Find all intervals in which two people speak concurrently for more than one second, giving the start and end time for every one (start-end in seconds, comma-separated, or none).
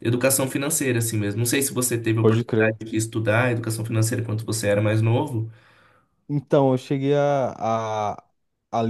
none